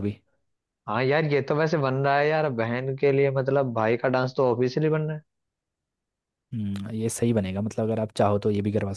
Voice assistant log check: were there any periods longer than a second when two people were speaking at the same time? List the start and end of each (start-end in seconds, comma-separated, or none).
none